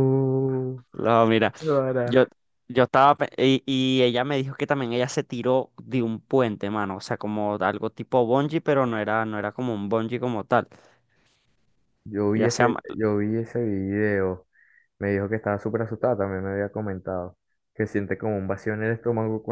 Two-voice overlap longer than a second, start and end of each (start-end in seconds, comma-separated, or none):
none